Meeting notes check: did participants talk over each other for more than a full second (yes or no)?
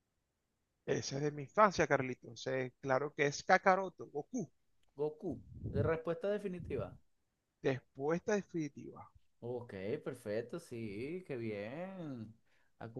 no